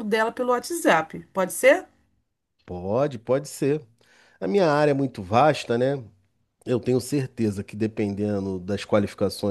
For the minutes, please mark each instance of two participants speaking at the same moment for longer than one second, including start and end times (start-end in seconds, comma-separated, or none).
none